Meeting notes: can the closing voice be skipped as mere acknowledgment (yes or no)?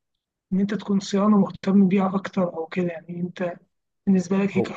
yes